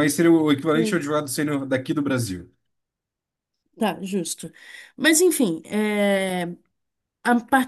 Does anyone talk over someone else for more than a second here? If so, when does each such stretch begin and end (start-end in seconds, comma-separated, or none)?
none